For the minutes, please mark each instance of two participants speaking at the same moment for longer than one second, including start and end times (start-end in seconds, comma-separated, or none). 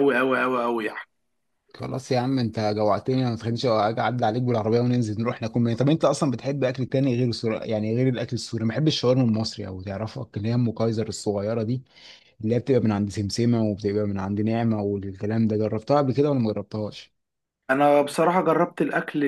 none